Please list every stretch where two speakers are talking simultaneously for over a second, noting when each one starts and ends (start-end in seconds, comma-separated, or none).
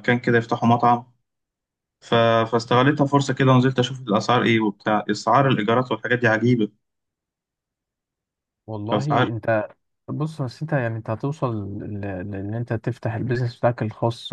none